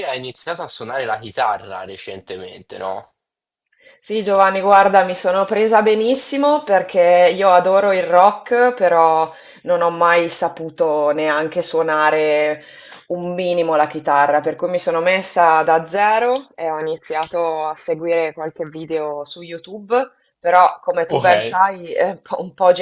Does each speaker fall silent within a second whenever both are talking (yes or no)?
yes